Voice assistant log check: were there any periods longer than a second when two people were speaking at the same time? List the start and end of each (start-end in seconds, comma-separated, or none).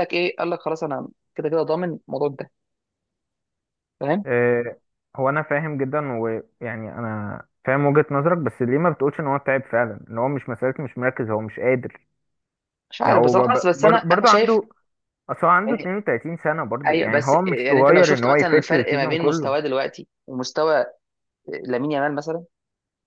13.0-14.6, 16.9-19.6